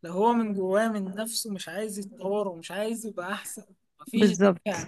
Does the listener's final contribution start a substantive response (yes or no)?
no